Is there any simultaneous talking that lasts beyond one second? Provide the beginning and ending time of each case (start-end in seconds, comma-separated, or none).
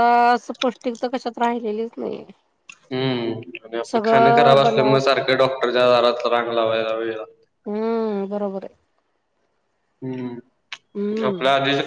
none